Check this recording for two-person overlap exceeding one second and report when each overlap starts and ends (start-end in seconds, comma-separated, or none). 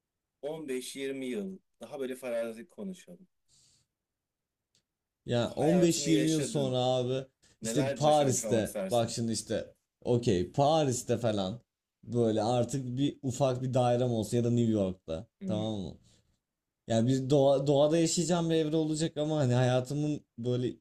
5.5-6.8, 7.6-9.2